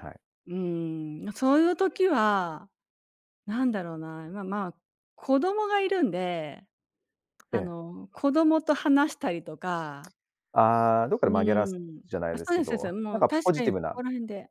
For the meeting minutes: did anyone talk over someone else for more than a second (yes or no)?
yes